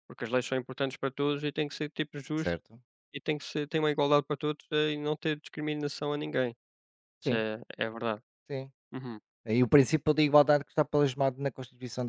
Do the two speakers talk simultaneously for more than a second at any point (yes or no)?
no